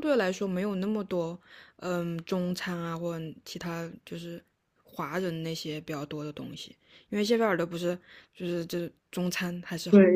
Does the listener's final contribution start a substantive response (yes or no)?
yes